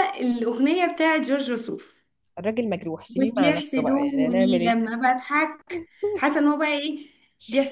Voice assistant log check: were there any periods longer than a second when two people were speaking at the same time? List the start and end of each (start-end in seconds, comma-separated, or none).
3.2-4.8